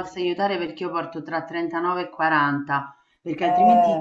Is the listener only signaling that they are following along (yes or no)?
yes